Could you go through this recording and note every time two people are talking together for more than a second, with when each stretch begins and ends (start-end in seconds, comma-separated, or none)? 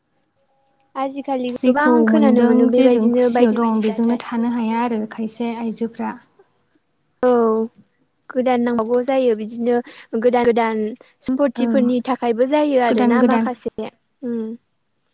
1.6-4.2